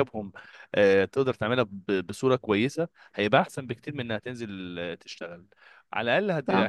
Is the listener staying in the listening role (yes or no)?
yes